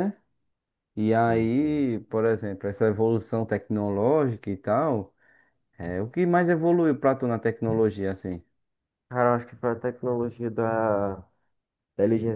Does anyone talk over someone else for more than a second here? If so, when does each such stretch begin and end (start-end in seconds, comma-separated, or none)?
none